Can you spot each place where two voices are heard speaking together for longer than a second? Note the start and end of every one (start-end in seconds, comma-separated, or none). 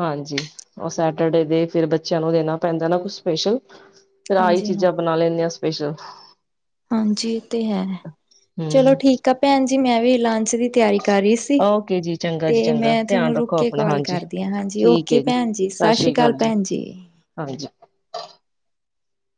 12.5-14.2